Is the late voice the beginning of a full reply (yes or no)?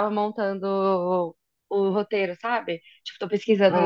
no